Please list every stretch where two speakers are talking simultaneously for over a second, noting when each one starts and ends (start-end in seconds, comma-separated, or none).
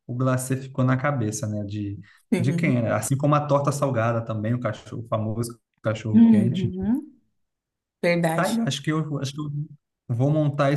none